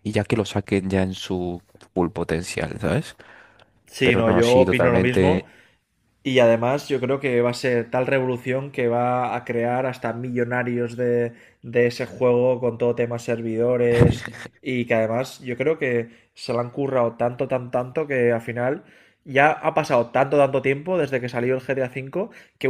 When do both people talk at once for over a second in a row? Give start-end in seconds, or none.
4.0-5.4